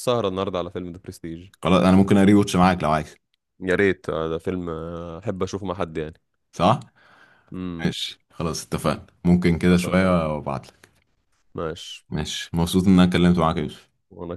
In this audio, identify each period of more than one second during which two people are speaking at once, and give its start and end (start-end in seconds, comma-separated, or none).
none